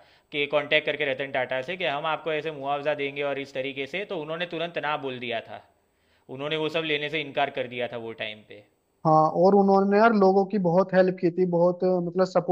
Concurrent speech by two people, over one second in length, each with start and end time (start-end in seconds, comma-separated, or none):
none